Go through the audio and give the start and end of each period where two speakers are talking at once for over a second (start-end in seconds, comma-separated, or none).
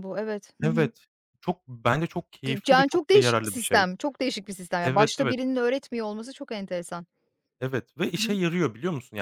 2.5-3.9